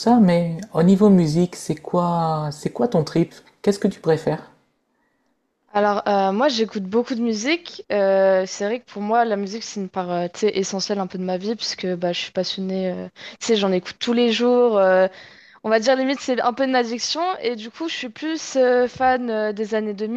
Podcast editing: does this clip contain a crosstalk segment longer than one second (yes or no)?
no